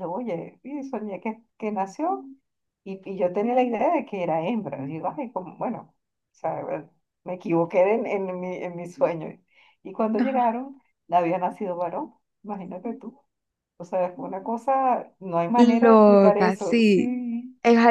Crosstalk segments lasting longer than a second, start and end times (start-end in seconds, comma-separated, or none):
15.6-17.1